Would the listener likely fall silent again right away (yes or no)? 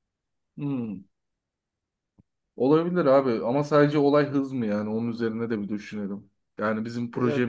yes